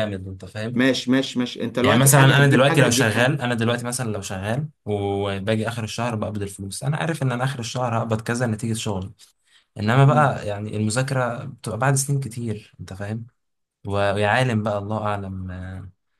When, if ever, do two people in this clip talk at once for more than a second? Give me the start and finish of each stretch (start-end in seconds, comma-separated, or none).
1.8-3.5